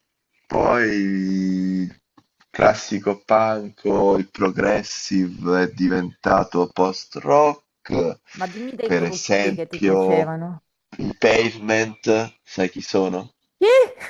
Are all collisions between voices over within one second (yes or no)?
no